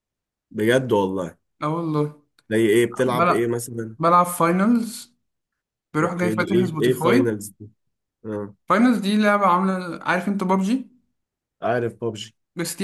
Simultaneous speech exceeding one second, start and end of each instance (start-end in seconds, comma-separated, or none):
6.0-7.4